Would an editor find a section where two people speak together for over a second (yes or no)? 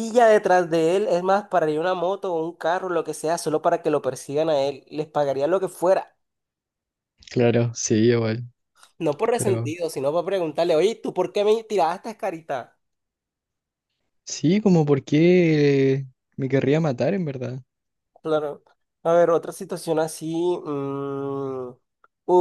no